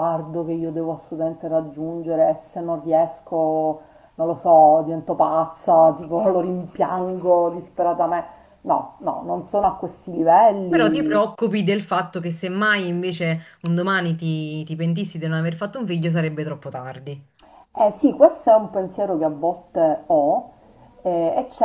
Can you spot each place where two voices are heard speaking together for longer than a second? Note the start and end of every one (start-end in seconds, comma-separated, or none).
none